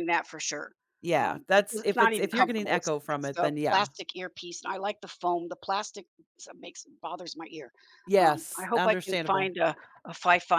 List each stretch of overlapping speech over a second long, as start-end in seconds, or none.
1.1-3.9, 8.2-9.5